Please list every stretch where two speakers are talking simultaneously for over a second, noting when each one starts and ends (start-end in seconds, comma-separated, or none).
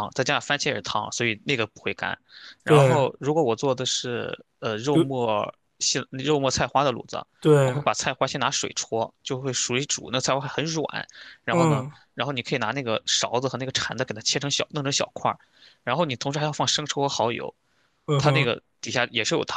none